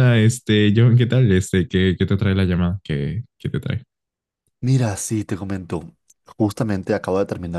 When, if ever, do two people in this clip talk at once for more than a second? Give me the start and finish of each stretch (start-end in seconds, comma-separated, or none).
none